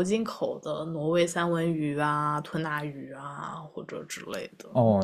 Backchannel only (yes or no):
no